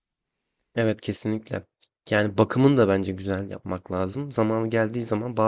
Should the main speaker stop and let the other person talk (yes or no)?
no